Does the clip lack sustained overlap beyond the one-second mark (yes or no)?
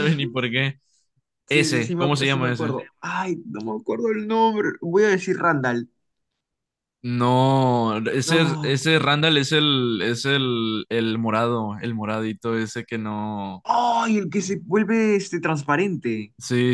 no